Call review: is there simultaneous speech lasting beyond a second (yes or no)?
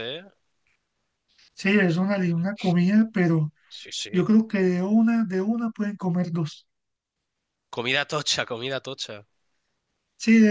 no